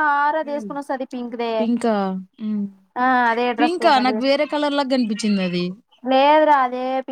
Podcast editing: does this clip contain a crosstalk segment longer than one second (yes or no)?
no